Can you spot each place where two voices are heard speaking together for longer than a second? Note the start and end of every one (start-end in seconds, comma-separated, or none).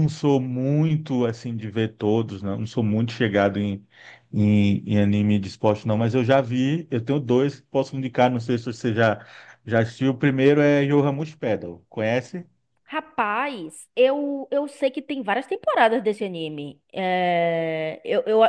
none